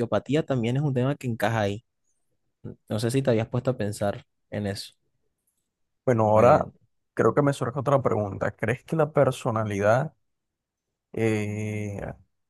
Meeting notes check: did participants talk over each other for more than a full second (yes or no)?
no